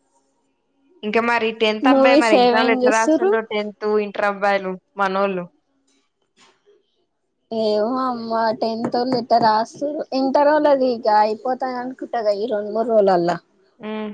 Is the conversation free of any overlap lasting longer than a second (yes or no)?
no